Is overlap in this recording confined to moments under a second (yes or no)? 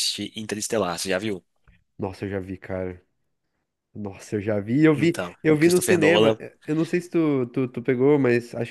no